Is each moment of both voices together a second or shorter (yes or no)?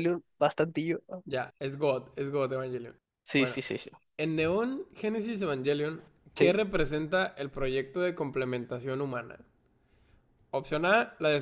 yes